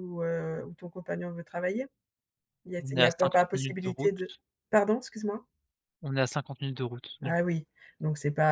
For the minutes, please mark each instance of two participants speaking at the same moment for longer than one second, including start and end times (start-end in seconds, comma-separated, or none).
2.8-4.1